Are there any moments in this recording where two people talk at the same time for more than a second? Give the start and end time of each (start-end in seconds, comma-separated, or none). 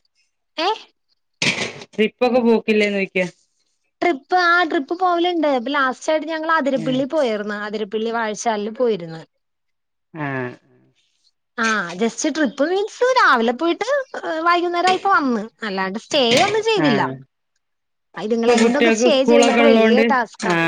18.4-20.0